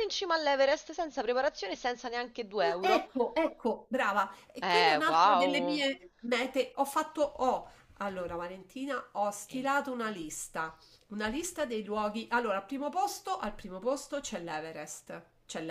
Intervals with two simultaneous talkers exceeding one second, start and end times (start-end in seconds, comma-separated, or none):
4.6-5.8